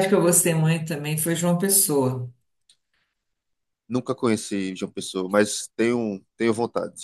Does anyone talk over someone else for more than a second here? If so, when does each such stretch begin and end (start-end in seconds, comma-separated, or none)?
none